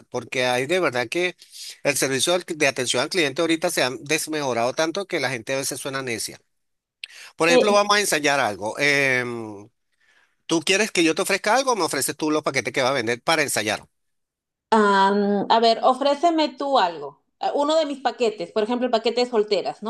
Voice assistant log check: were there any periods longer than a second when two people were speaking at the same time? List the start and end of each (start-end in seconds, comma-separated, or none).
none